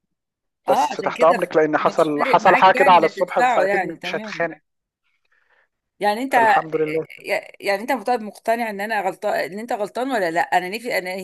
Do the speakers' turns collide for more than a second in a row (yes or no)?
yes